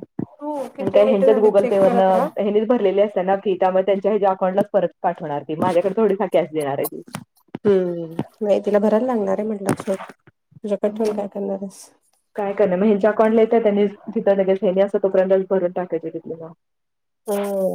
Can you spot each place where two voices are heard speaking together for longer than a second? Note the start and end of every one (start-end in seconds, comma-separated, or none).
0.9-2.3